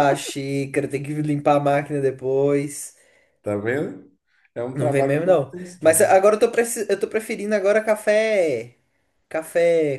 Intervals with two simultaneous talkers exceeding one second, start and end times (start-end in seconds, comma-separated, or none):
4.7-6.1